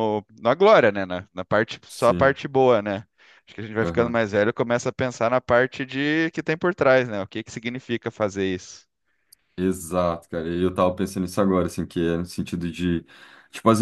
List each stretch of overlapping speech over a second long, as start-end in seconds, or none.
none